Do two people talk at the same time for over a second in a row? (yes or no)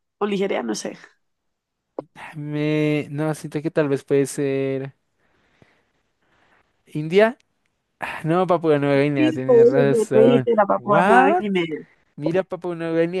yes